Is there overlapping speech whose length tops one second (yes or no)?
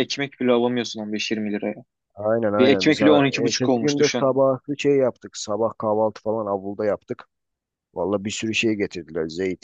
yes